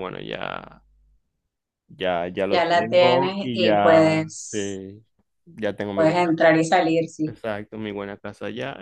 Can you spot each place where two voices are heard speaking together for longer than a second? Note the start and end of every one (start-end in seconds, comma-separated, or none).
2.5-4.6